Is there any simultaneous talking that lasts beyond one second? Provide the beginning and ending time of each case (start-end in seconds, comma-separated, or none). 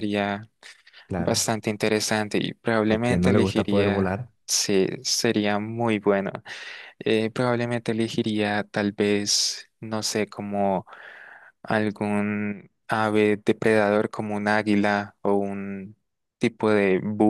2.9-4.3